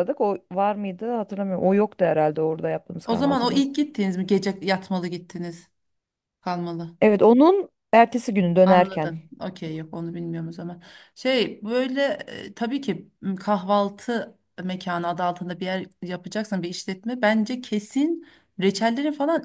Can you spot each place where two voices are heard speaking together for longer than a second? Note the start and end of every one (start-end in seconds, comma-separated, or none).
none